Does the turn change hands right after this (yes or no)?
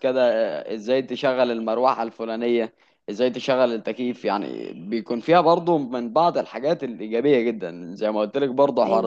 no